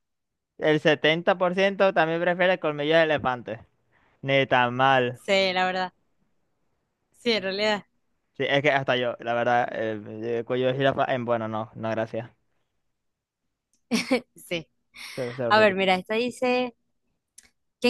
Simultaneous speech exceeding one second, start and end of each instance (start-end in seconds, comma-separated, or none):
none